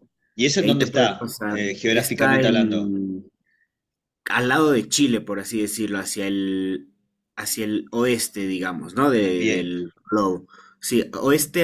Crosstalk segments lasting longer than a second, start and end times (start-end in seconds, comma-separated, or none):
0.6-3.0